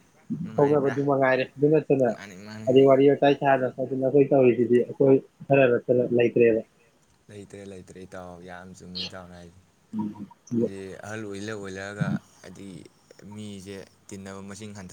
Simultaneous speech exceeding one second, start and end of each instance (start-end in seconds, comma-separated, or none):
none